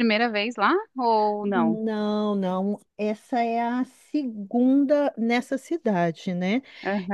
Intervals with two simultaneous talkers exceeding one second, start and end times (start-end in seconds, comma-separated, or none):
none